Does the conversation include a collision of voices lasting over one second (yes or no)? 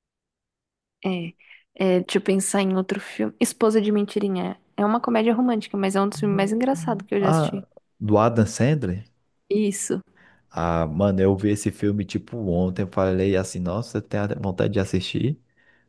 no